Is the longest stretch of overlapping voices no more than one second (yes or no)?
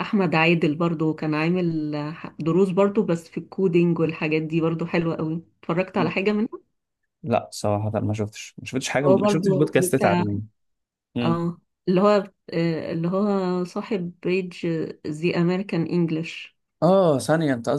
no